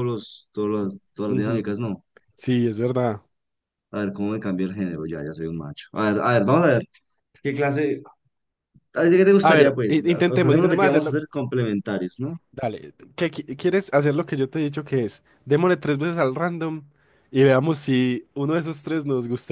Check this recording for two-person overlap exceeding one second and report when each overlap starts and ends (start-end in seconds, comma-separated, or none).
9.4-11.2